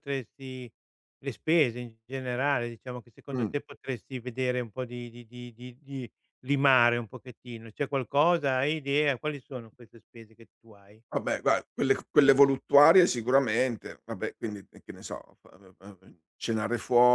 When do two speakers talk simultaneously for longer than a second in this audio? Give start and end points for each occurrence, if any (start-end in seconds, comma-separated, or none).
none